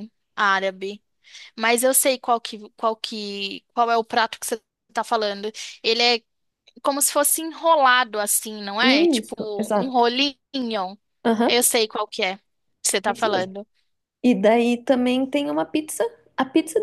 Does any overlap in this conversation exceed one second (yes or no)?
yes